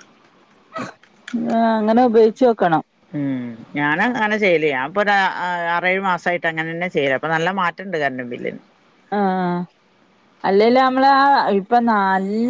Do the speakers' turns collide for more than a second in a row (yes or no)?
no